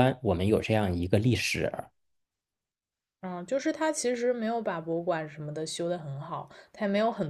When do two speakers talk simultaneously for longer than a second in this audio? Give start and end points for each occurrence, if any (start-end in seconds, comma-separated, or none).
none